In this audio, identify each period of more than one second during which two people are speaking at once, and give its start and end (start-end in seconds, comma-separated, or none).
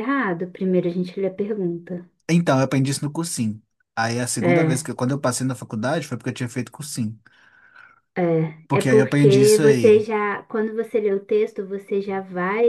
8.7-10.1